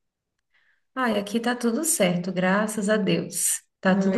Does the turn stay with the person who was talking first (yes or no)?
yes